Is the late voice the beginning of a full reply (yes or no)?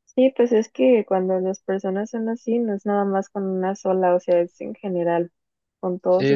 no